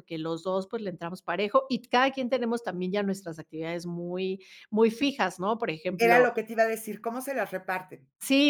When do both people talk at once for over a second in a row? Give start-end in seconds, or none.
none